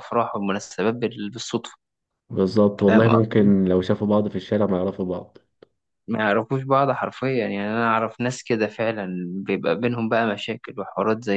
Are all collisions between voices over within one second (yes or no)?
yes